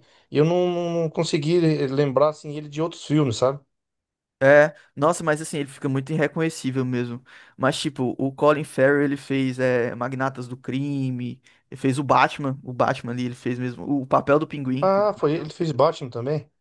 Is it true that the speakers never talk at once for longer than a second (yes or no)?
yes